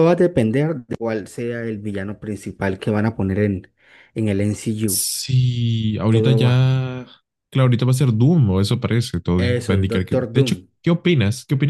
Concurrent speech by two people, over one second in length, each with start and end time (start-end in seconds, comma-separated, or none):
9.3-10.7